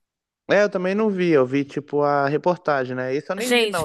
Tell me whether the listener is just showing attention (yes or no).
no